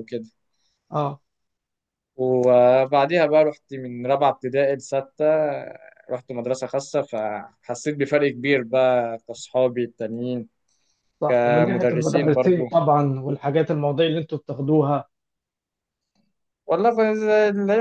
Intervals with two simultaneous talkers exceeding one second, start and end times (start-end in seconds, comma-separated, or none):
11.3-12.6